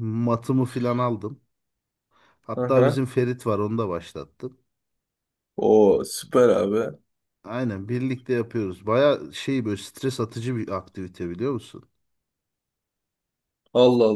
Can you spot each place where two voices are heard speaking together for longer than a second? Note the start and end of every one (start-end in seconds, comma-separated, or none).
none